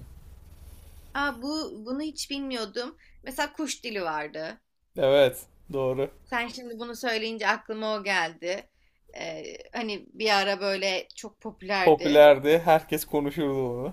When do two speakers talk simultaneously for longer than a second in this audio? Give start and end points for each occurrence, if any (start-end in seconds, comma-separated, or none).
none